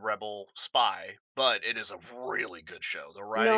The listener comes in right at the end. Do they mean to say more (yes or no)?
yes